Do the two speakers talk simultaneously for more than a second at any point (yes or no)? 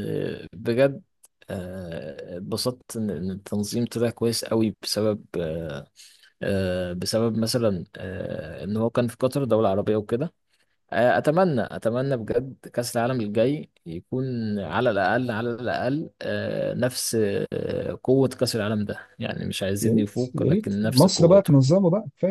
yes